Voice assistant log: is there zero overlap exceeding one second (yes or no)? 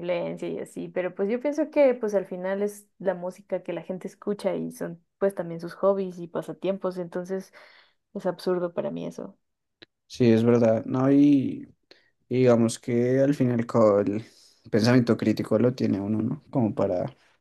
yes